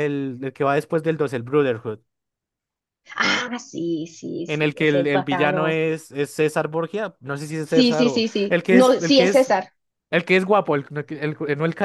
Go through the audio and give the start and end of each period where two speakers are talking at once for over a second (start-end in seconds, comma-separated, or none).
4.5-5.8, 7.6-9.5